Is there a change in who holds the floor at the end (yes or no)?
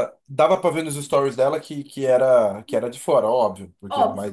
yes